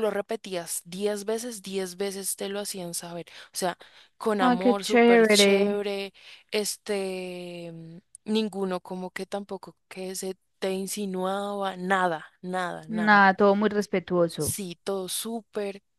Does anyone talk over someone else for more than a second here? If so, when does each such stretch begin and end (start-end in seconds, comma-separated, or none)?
4.4-5.8